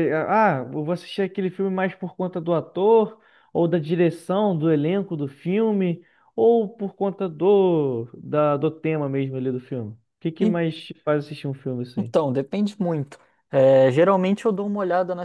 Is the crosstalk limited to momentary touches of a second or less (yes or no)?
yes